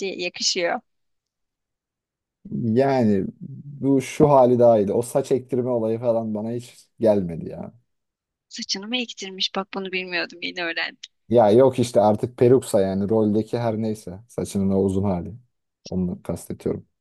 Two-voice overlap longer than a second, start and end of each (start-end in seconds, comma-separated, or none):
none